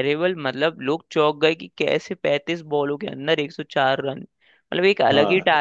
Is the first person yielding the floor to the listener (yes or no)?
no